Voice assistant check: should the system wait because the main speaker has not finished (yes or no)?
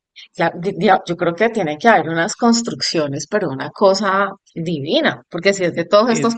yes